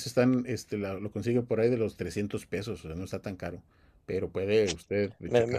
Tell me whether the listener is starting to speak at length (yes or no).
no